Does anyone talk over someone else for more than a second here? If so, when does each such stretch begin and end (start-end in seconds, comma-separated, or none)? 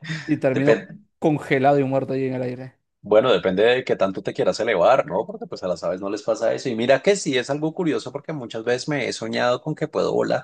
none